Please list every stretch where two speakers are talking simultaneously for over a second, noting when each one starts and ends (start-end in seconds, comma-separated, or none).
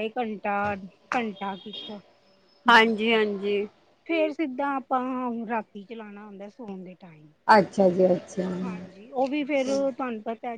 none